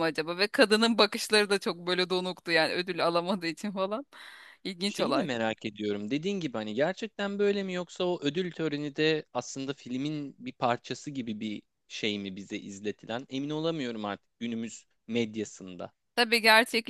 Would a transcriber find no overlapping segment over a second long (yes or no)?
yes